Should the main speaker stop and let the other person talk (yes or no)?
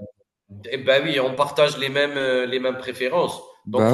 no